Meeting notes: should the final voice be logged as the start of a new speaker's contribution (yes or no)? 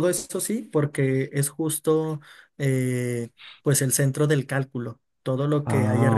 no